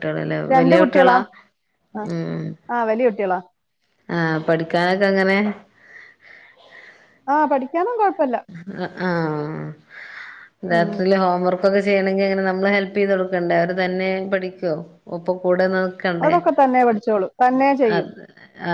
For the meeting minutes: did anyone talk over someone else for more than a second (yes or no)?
no